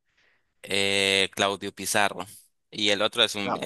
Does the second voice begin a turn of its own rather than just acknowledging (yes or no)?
no